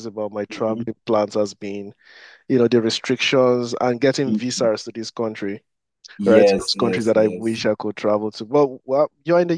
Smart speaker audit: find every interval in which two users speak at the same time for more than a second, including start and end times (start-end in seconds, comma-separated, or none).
6.2-7.6